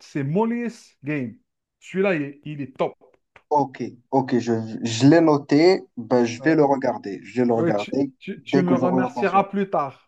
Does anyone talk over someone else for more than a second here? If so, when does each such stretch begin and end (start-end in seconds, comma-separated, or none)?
7.5-9.5